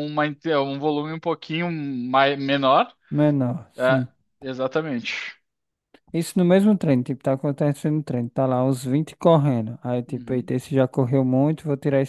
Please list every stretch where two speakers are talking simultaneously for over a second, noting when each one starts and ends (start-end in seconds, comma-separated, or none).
none